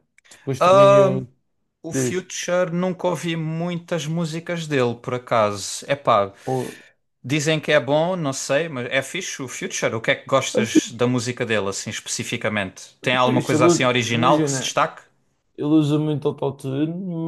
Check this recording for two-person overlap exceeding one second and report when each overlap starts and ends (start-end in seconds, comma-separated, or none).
13.2-14.8